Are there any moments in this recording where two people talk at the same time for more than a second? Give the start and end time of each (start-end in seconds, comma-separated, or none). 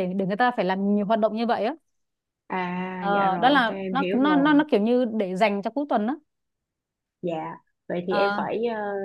3.1-4.6